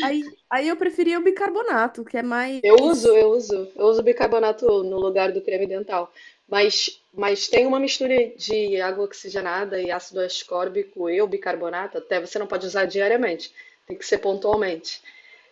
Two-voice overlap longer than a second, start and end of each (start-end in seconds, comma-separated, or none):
none